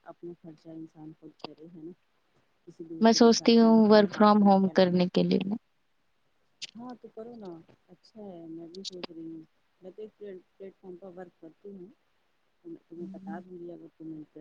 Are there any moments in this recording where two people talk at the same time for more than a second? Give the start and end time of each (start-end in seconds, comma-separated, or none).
3.0-5.3